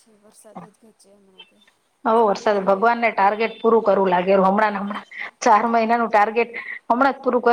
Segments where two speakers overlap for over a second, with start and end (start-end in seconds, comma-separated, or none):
none